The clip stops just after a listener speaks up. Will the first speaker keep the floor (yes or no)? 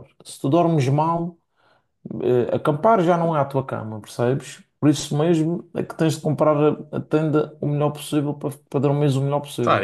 no